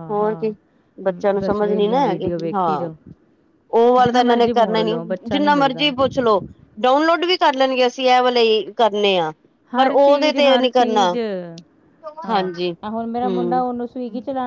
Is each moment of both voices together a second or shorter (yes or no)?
no